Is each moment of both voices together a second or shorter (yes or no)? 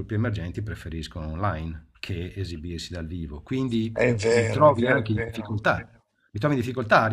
no